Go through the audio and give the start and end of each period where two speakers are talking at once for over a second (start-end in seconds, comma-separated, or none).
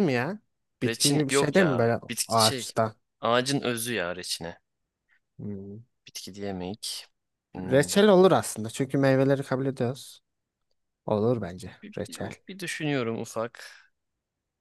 0.8-2.7